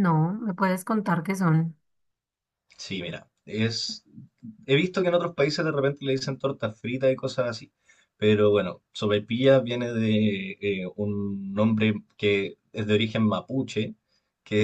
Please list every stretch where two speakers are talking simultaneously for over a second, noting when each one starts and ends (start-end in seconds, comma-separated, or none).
none